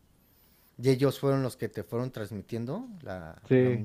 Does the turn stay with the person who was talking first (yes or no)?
no